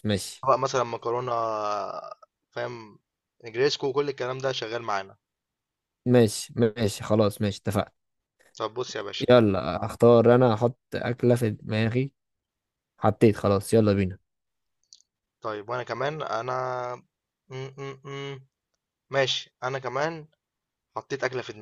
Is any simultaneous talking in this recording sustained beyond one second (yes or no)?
no